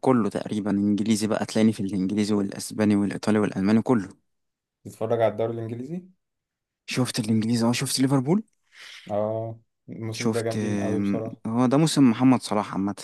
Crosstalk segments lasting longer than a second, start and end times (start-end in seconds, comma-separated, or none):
10.1-11.4